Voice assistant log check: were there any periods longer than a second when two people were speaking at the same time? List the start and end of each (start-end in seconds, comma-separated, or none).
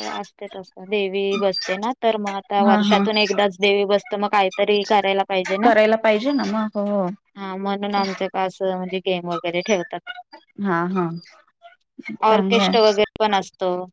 none